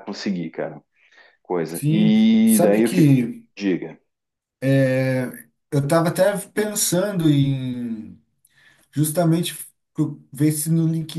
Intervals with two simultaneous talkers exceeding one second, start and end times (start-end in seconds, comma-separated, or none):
1.7-3.5